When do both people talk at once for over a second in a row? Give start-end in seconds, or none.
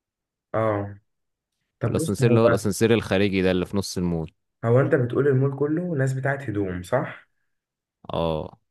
none